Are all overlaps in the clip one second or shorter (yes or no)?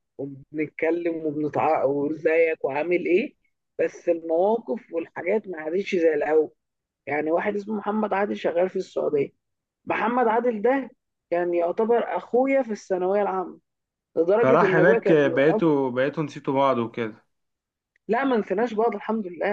no